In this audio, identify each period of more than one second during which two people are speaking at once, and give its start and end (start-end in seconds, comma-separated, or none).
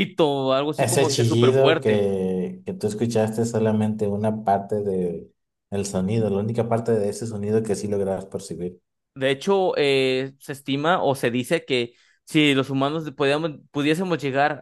0.8-2.0